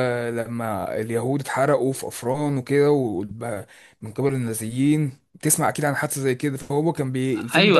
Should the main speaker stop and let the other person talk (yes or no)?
yes